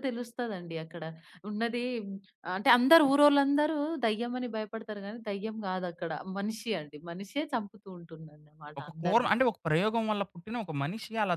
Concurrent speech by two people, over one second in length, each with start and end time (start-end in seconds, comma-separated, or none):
none